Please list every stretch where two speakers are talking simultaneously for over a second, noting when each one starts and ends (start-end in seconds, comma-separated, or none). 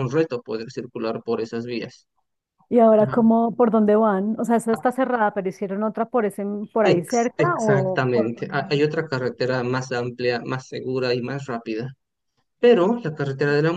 6.8-9.2